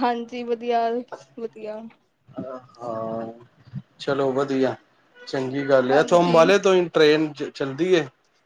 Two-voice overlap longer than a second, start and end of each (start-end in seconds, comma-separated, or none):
none